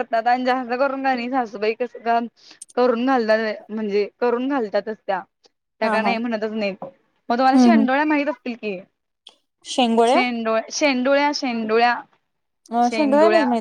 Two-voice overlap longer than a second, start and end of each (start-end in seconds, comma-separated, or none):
none